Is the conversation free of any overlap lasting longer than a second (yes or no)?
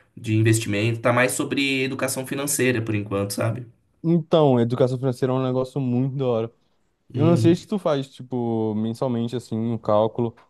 yes